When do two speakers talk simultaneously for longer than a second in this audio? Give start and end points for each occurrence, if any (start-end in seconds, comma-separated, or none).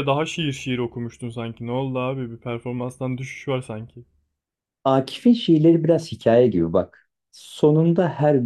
none